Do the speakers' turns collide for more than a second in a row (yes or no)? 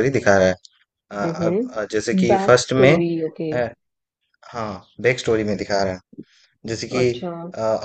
yes